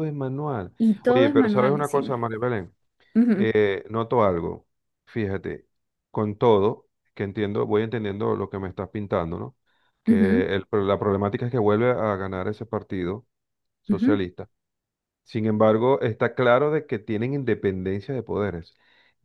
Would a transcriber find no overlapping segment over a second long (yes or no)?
no